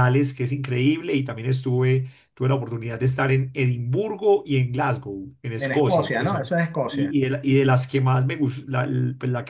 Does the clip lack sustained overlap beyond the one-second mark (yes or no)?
no